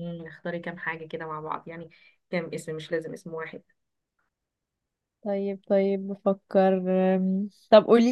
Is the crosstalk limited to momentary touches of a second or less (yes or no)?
yes